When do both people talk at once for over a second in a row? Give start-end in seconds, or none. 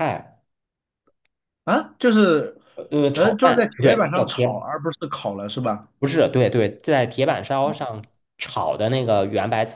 3.1-4.7